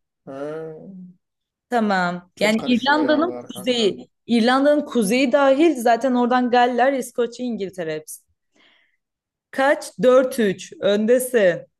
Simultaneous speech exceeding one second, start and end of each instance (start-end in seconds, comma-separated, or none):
2.3-4.0